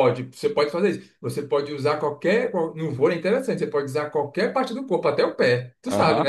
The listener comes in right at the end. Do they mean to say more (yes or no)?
yes